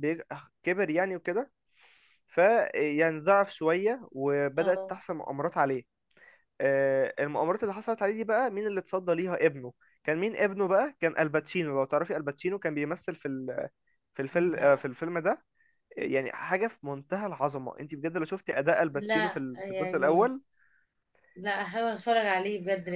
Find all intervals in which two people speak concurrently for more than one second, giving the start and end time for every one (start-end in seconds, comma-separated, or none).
18.9-20.4